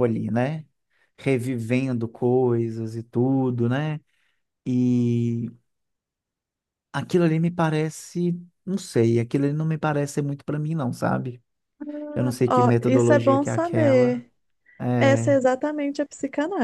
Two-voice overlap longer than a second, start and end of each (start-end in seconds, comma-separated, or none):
12.5-14.3